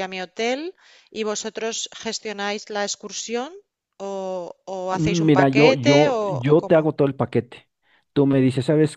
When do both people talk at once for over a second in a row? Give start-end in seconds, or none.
4.9-6.8